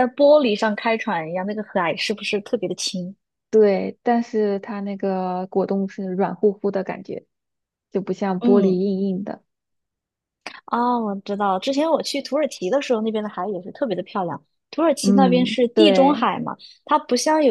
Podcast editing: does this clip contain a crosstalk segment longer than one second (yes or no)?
yes